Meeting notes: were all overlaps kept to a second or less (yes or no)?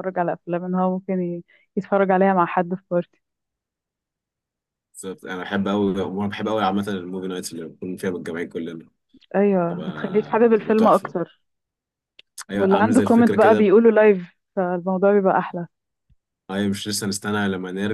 no